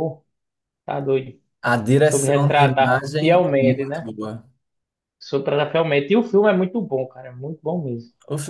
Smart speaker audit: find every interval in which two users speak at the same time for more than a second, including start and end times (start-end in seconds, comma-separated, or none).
2.0-4.1